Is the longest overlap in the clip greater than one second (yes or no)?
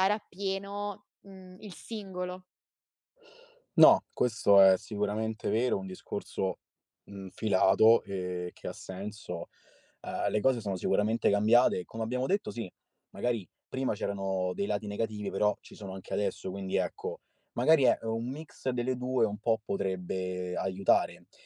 no